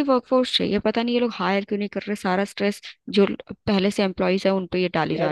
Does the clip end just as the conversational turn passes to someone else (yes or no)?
yes